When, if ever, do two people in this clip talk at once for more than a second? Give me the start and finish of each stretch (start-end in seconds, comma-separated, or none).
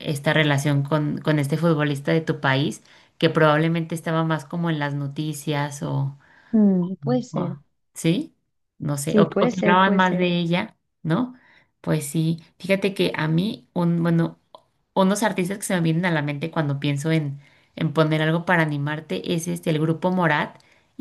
9.0-10.3